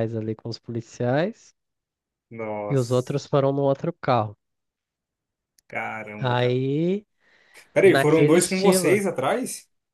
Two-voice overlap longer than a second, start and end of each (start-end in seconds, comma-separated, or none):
7.8-9.0